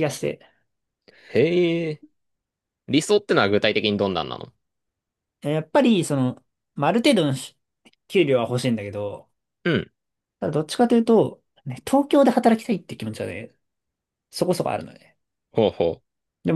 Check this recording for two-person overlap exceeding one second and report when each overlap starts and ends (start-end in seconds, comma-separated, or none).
none